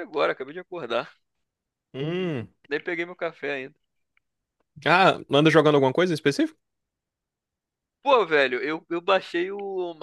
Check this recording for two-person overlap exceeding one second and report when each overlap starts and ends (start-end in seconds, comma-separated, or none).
none